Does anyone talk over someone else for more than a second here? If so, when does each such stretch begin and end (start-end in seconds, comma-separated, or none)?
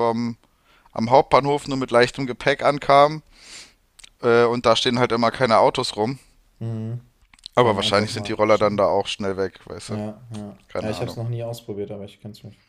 7.6-8.8